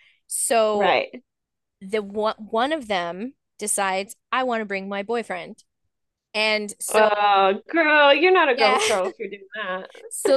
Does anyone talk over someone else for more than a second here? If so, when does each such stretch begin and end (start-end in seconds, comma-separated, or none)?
none